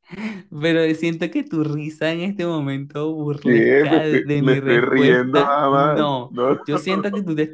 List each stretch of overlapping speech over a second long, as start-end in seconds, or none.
3.4-6.6